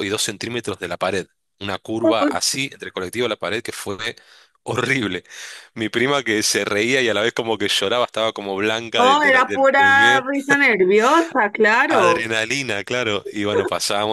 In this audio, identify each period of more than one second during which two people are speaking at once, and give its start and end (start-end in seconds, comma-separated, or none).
8.9-10.2